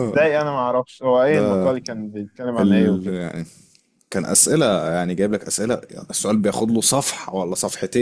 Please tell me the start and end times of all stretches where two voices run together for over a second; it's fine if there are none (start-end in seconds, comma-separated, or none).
none